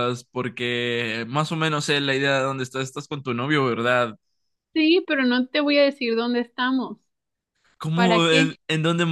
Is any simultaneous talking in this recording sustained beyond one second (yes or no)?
no